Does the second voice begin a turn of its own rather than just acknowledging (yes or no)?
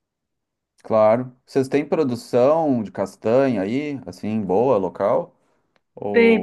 yes